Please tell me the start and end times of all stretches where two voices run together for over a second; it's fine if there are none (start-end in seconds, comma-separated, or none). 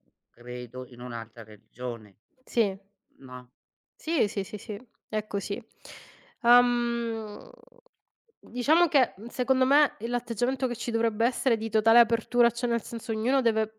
none